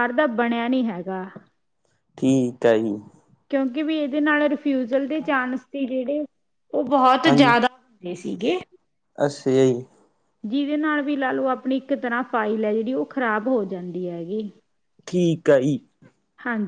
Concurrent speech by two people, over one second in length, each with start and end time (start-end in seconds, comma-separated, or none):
none